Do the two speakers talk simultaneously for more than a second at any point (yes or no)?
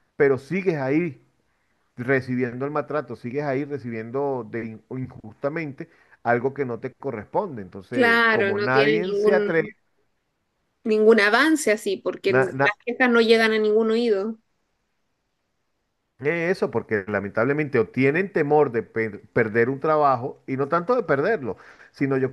yes